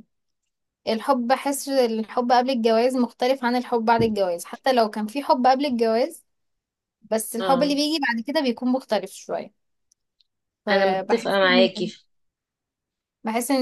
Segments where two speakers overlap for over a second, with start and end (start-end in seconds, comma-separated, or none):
10.7-11.9